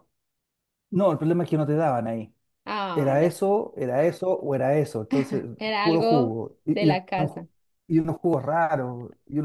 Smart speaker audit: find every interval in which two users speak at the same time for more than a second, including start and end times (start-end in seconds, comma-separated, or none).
5.8-7.5